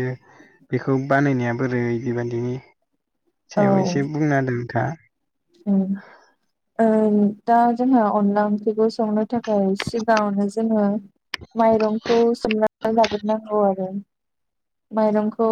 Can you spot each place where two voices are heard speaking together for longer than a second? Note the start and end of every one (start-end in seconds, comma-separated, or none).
none